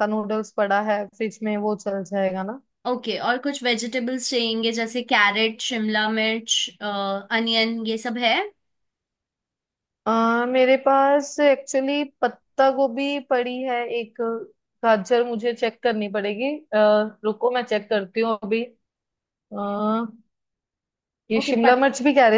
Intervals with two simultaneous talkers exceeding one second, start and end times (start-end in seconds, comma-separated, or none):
none